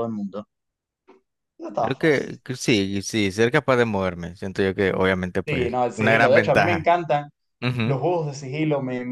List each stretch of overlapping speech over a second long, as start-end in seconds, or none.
5.5-6.9